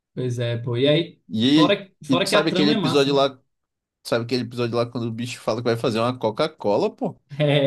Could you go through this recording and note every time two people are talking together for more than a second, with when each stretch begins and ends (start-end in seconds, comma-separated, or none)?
1.3-3.2